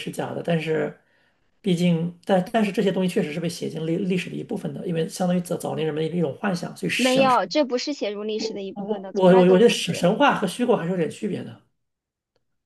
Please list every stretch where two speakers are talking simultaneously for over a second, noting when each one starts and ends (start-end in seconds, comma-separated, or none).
8.7-10.1